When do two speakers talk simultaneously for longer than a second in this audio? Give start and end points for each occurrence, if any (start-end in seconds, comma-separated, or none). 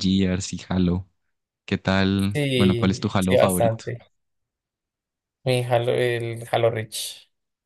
2.3-3.8